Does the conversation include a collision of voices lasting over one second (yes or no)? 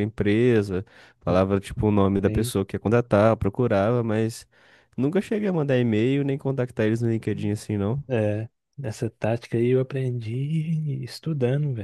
no